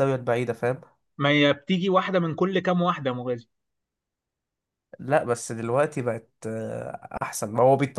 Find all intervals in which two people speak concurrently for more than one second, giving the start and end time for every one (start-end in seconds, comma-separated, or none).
none